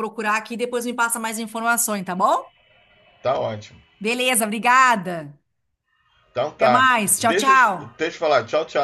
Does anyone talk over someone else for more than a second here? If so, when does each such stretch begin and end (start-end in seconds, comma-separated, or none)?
6.6-8.0